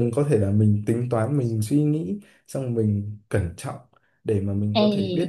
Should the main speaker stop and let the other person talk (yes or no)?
no